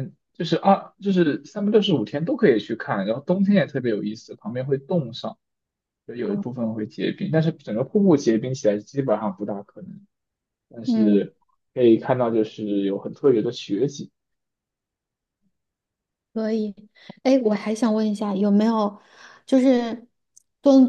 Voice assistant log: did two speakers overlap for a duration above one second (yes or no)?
no